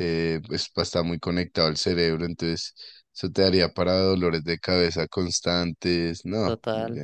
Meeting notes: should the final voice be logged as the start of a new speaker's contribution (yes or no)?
yes